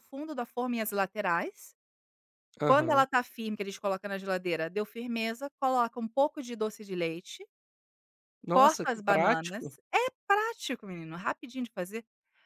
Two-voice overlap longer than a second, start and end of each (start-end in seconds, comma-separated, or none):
8.5-9.7